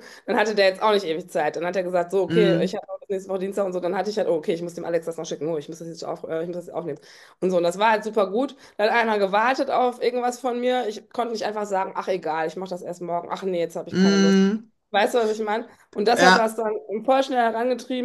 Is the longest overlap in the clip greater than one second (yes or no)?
no